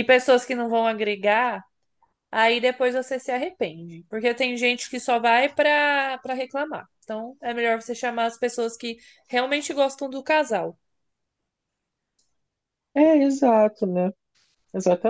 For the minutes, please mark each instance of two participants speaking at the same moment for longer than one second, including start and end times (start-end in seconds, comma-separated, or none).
none